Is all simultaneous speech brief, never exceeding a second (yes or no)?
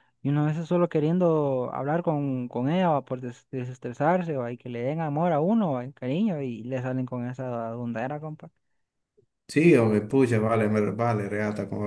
yes